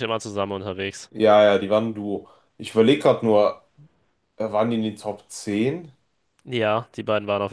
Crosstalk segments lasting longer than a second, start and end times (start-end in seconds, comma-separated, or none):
none